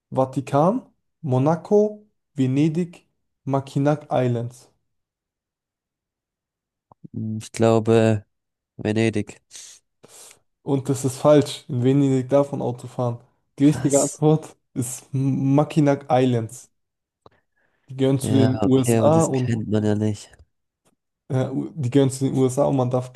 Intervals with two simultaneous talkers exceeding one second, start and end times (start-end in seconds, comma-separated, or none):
18.2-19.6